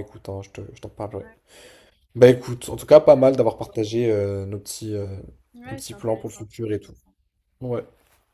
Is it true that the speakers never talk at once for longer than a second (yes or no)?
no